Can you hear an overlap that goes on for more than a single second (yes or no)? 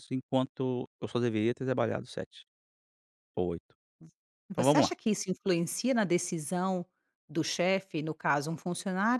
no